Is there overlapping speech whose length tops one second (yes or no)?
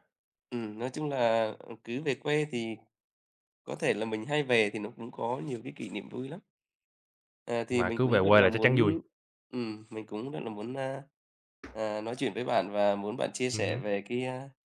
yes